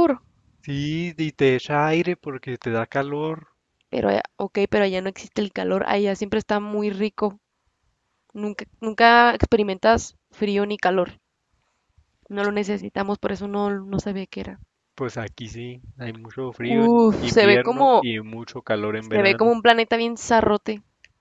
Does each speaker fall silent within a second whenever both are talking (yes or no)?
no